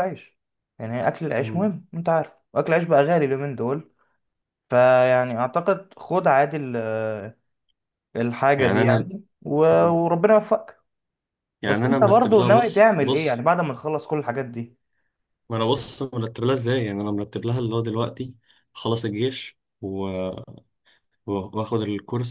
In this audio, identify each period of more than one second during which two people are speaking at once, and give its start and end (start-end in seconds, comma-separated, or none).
11.7-13.4